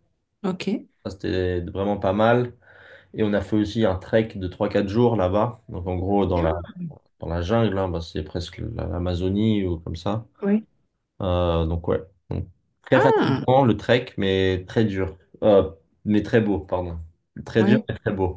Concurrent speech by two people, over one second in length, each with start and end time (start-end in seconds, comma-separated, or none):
none